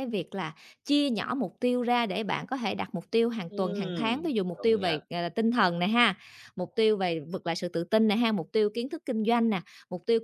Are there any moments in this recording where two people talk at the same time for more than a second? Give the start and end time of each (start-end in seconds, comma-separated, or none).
3.5-5.0